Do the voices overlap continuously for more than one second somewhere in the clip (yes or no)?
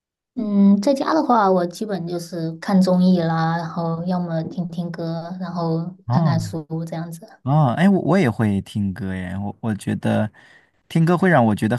no